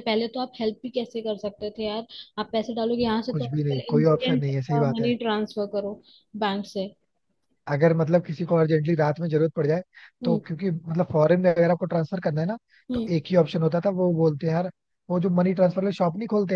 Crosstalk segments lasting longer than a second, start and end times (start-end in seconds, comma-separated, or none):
3.3-5.1